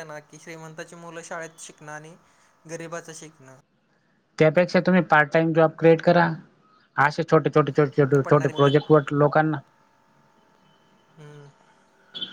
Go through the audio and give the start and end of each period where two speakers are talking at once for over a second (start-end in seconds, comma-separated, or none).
none